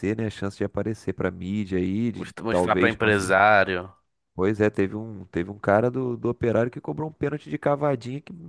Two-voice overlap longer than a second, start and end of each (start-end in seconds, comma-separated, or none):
2.1-3.4